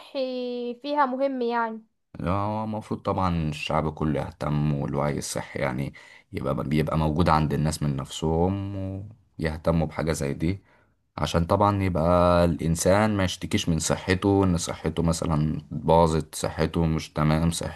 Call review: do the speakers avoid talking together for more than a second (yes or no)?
yes